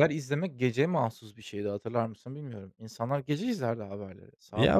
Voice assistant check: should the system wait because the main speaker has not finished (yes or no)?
no